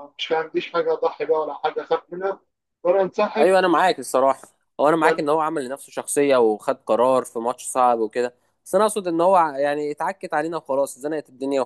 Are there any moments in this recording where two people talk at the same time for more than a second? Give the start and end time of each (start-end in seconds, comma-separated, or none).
none